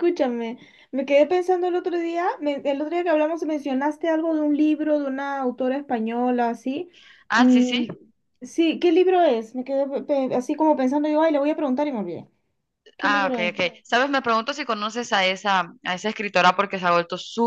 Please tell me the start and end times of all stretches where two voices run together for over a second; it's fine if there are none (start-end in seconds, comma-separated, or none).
none